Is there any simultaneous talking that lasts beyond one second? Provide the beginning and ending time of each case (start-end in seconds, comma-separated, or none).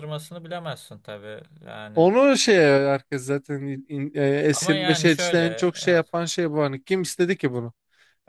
4.5-6.1